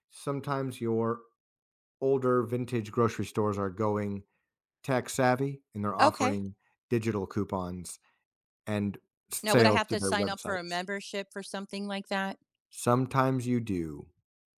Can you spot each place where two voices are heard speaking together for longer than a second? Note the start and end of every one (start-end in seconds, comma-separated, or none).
9.4-10.8